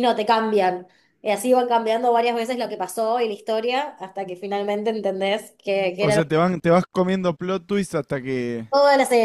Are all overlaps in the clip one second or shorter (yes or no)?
yes